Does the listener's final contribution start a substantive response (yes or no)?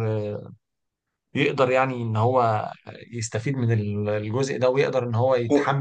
no